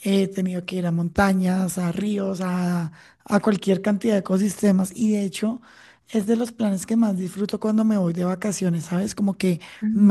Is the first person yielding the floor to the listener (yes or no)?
no